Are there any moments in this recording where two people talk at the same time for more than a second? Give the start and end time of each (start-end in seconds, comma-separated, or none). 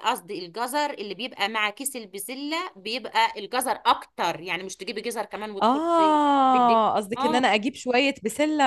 5.6-7.5